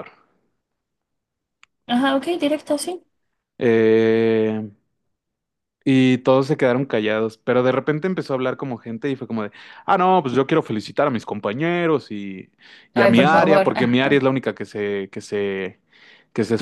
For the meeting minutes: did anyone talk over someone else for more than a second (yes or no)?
yes